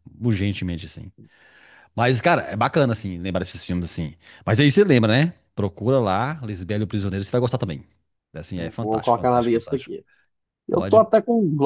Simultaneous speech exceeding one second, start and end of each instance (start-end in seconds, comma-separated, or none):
8.6-9.9